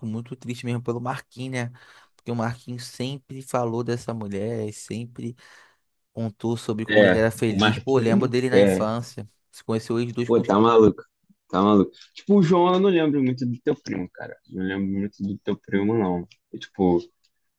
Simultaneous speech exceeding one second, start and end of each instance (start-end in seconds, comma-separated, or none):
6.9-8.9